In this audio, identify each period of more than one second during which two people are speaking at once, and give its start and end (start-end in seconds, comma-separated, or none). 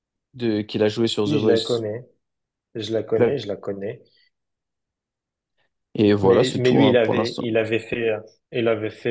6.2-7.5